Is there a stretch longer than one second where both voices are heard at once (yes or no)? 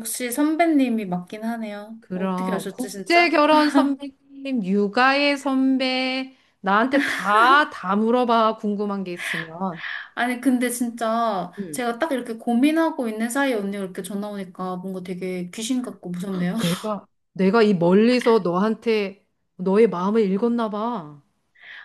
yes